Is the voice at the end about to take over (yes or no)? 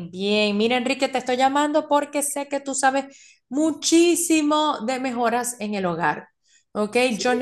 no